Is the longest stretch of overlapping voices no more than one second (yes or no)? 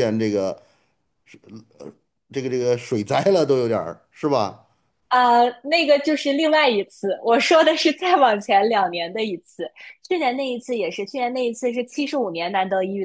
yes